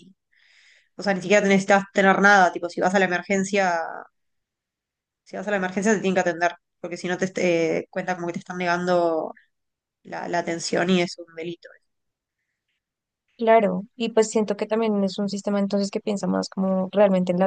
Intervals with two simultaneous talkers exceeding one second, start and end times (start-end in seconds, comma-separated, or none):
none